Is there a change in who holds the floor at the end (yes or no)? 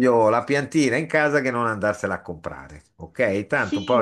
yes